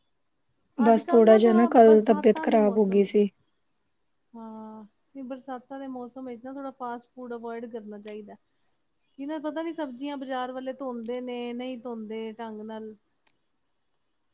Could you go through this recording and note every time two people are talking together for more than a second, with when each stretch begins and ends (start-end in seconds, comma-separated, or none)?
0.9-3.2